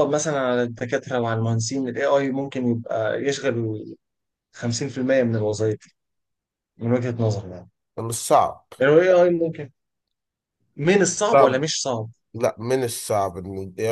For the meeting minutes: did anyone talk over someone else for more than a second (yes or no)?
no